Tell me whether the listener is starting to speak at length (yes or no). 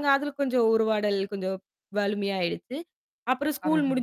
no